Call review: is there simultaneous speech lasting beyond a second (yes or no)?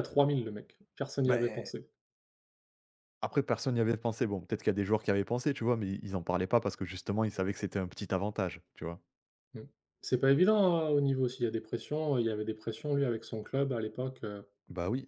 no